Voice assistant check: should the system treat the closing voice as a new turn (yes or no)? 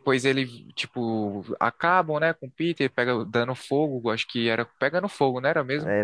yes